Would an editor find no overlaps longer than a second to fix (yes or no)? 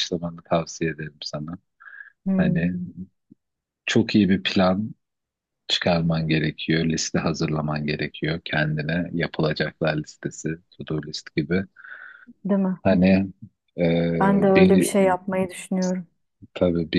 yes